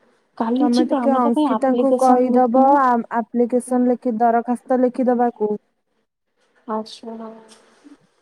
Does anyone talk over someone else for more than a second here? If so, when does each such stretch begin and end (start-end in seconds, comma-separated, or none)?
0.6-2.8